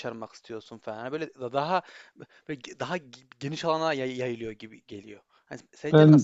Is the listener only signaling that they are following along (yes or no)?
yes